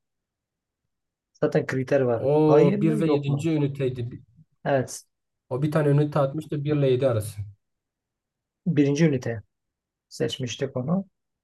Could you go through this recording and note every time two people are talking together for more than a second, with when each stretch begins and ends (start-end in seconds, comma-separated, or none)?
2.2-3.5